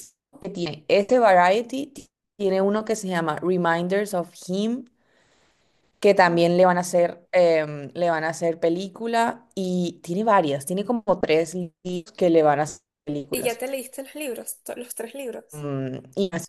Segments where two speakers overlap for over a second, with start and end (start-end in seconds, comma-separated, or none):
none